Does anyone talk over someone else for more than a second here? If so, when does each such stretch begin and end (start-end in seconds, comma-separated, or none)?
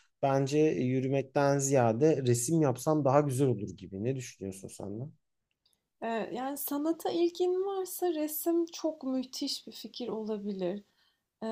none